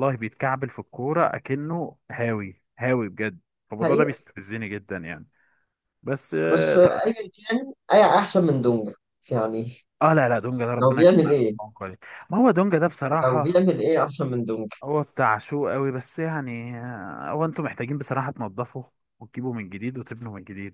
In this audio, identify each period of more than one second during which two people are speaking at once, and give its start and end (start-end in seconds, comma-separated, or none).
none